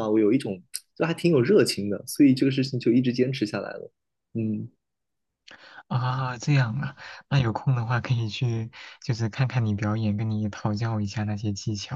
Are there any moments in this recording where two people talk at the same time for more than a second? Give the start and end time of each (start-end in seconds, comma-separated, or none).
none